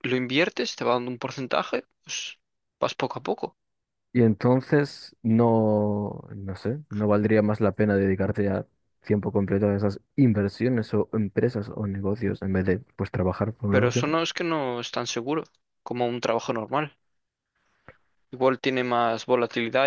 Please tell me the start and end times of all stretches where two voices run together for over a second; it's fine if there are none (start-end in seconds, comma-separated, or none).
none